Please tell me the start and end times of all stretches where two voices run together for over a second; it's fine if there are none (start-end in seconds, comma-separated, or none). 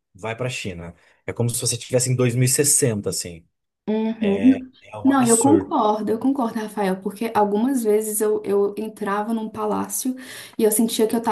4.2-5.7